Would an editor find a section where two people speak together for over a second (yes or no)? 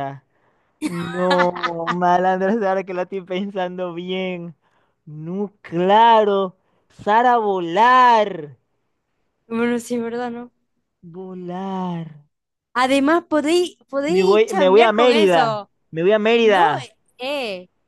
yes